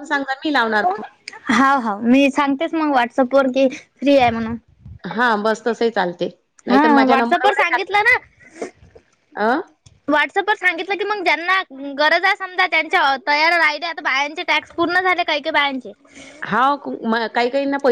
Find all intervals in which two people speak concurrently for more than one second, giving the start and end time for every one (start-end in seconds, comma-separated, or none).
6.7-8.0